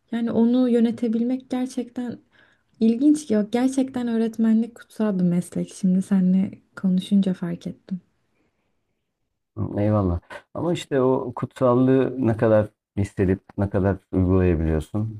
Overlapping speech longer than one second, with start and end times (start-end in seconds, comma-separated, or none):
none